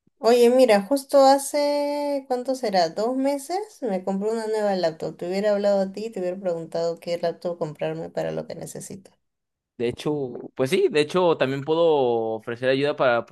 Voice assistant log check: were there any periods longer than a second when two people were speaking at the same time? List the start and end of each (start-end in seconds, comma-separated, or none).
none